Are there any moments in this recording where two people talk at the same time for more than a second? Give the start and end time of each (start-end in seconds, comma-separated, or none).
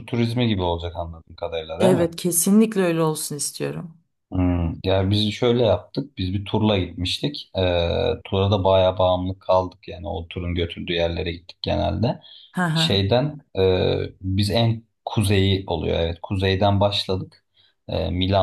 none